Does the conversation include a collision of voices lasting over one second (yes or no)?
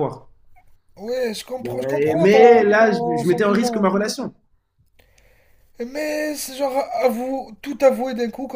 yes